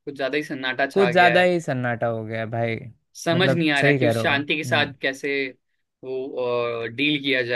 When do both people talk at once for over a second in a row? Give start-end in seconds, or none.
3.3-4.9